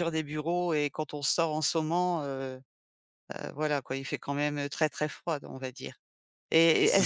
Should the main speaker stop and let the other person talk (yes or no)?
no